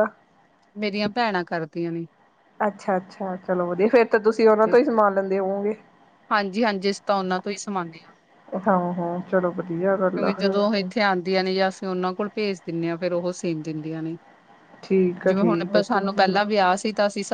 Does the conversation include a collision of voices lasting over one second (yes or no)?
no